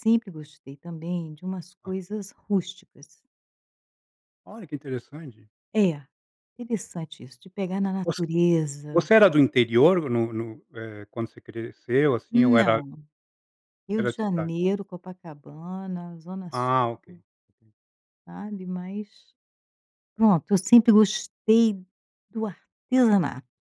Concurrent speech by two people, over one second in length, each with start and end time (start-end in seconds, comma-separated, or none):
none